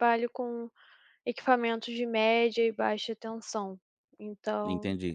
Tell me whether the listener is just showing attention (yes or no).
no